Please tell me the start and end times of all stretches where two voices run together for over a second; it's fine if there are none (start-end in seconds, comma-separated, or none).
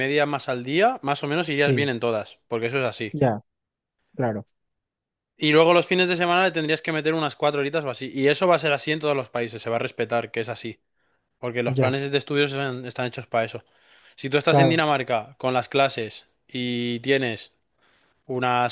none